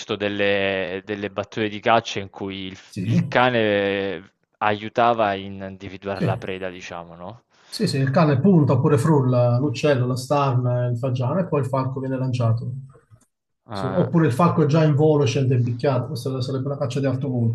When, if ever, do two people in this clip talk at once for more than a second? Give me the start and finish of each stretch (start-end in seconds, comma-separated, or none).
none